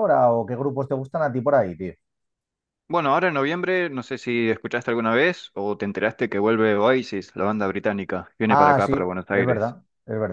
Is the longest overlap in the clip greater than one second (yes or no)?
yes